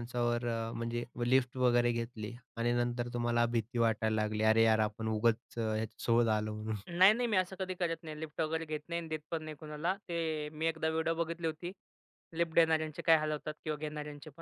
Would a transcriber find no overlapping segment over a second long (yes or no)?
yes